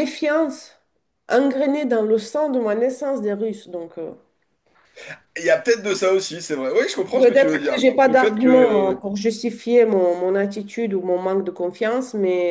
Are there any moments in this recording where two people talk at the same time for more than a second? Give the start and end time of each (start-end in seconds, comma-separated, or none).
7.2-9.0